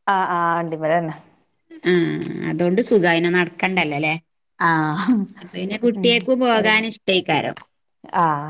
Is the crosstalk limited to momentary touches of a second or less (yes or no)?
yes